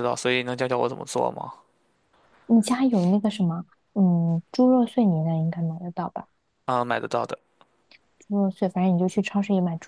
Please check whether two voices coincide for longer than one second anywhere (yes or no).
no